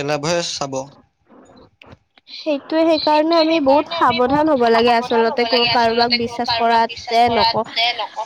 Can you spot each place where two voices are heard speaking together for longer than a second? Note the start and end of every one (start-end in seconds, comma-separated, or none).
3.0-7.5